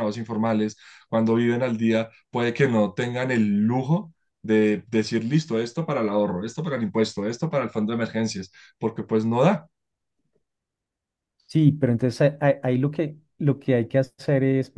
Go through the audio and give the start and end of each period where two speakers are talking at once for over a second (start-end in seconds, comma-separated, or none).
none